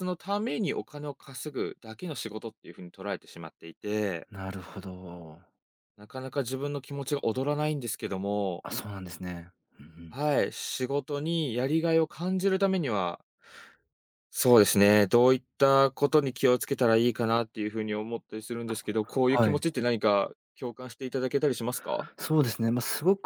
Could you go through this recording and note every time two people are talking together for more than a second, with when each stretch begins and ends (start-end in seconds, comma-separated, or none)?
none